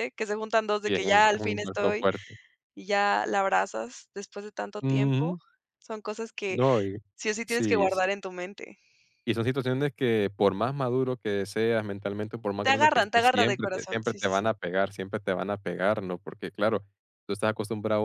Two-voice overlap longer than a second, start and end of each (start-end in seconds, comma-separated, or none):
0.8-2.1, 12.6-14.5